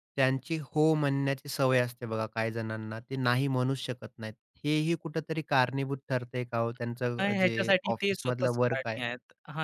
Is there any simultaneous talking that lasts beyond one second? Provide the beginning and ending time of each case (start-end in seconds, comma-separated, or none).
7.2-9.0